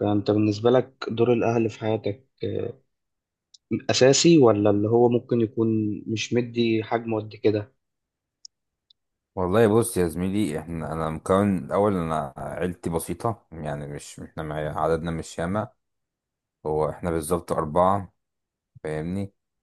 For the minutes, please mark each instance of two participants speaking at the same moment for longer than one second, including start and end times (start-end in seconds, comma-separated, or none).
none